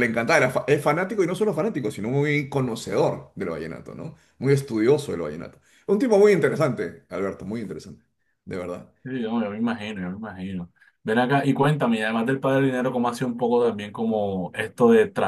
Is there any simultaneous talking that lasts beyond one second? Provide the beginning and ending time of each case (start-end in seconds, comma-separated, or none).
none